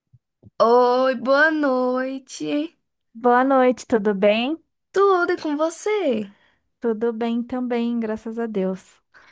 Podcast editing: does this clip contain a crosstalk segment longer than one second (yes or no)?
no